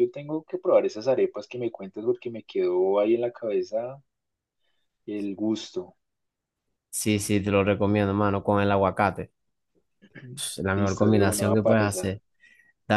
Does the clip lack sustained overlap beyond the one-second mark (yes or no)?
no